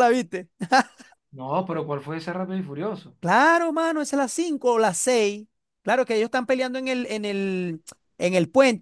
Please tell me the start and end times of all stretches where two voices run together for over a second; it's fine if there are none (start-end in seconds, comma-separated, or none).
none